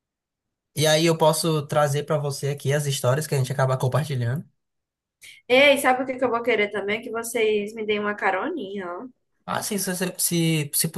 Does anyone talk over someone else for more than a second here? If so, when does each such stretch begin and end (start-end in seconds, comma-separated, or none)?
none